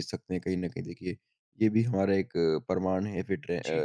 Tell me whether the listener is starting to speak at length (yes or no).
no